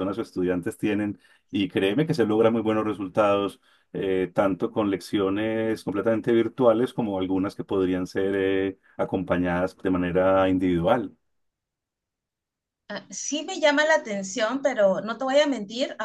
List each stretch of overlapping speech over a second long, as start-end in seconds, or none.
none